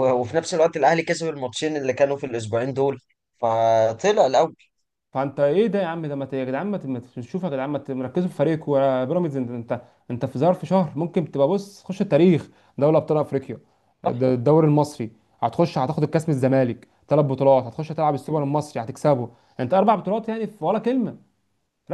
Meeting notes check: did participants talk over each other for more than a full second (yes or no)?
no